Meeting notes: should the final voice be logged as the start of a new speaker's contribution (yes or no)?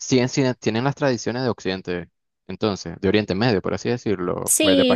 yes